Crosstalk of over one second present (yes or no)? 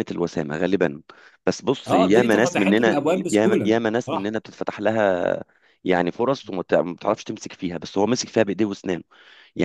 yes